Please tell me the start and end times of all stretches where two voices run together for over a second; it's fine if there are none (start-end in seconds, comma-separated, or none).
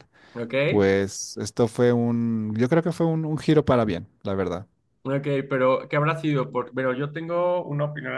none